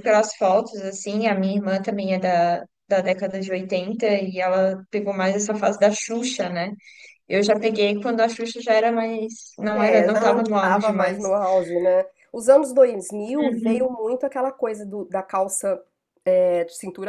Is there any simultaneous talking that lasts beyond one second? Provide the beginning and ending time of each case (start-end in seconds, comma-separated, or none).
9.7-11.2